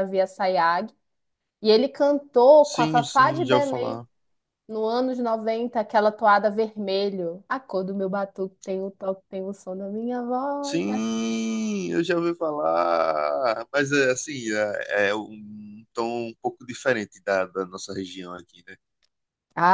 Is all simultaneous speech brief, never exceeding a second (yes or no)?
no